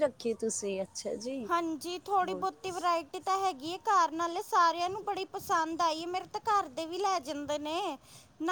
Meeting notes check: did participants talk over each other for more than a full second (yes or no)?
no